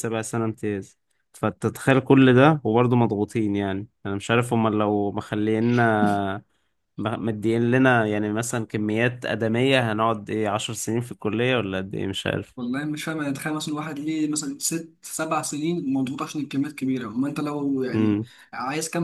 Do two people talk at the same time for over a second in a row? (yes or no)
no